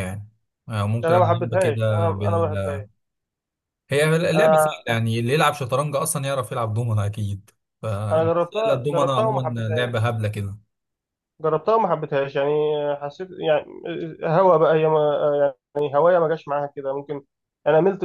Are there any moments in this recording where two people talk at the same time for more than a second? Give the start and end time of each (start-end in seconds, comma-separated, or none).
1.0-2.8, 8.1-10.1